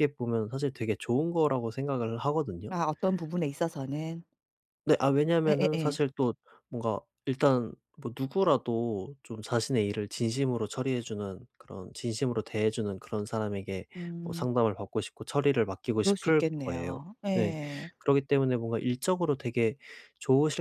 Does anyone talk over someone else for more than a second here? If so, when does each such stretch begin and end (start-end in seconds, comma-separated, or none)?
16.0-17.6